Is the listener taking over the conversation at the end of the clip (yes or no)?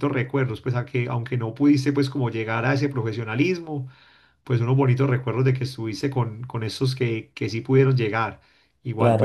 no